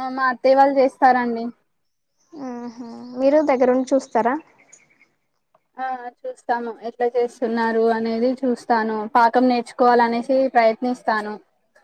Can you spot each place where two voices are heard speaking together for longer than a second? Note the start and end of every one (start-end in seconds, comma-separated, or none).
none